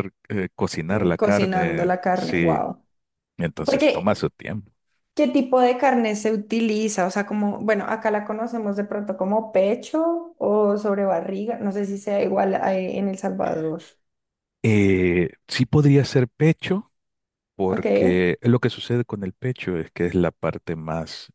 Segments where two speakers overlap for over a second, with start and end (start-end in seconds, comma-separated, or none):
0.9-2.6